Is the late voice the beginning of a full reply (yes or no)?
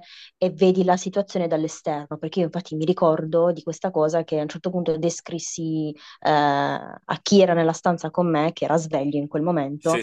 no